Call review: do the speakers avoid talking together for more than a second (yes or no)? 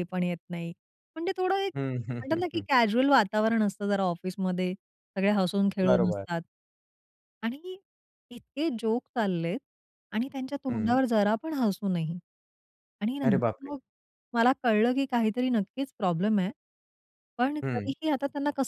yes